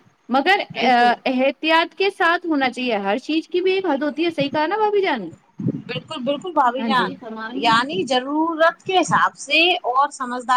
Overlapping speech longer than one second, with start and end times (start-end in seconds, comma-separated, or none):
none